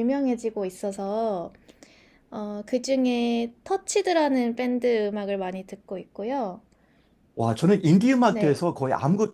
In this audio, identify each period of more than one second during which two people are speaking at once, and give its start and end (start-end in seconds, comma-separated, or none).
none